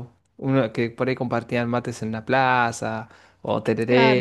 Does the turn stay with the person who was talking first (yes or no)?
no